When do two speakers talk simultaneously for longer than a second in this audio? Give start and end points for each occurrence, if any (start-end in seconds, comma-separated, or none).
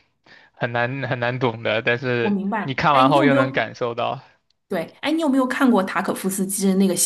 2.2-3.6